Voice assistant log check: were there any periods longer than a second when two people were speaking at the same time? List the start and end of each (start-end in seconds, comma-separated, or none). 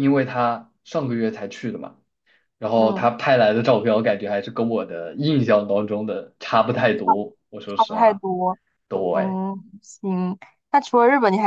none